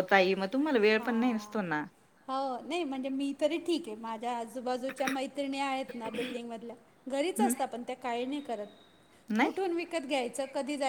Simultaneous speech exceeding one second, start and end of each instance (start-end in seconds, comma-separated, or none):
none